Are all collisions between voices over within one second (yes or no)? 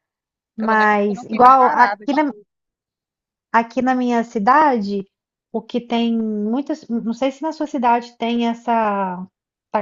no